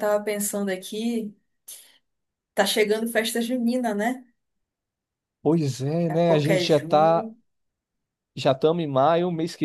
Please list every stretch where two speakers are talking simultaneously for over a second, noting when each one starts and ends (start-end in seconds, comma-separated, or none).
6.1-7.3